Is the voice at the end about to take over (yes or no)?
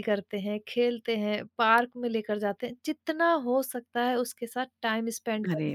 yes